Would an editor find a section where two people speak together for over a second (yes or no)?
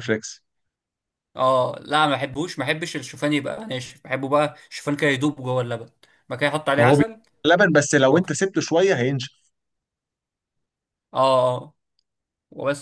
no